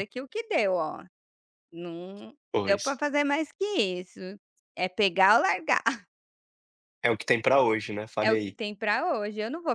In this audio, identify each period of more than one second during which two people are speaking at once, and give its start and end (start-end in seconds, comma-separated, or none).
none